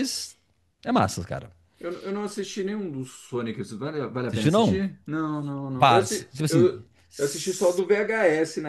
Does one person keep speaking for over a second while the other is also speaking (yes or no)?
yes